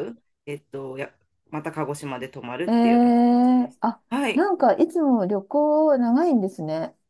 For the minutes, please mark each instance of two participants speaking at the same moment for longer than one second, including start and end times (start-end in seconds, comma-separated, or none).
2.7-4.5